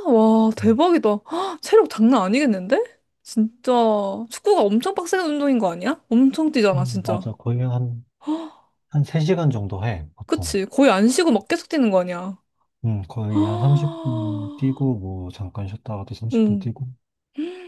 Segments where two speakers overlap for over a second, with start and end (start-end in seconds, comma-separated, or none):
13.3-14.6